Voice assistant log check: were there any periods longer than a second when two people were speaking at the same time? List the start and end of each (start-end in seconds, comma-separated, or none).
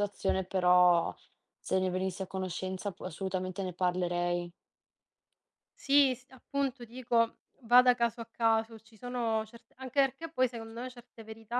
none